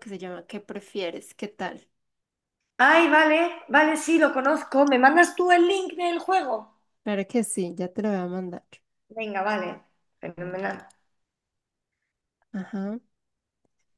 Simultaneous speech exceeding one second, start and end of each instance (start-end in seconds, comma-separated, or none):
none